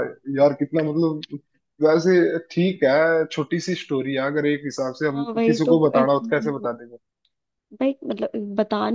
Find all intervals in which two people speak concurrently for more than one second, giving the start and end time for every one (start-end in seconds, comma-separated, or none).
5.1-6.7